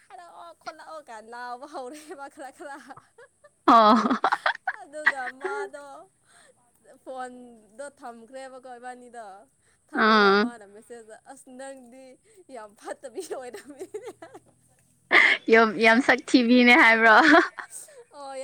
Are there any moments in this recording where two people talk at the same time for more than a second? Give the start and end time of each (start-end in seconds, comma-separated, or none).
none